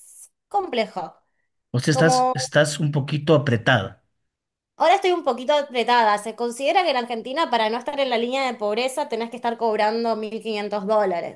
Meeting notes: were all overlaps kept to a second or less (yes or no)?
yes